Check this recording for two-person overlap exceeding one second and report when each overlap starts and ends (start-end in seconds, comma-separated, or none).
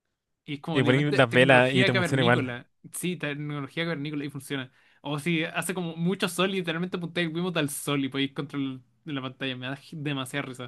0.7-2.6